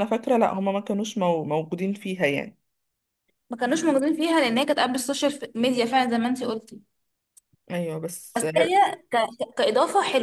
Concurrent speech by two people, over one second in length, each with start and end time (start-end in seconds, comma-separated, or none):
none